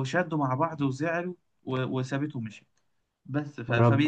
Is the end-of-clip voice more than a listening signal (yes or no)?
no